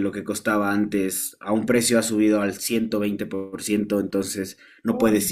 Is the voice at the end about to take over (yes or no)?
no